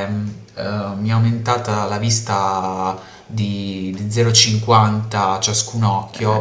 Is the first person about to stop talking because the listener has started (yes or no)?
no